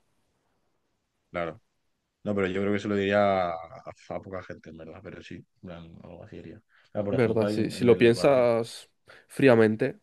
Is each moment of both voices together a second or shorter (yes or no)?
no